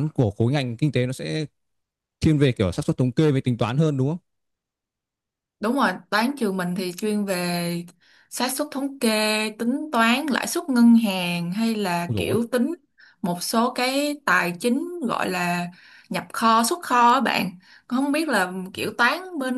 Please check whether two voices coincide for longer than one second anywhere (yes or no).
no